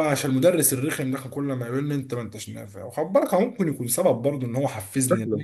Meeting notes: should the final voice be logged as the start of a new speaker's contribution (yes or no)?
yes